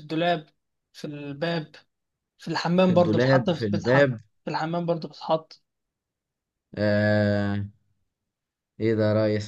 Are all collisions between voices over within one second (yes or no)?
no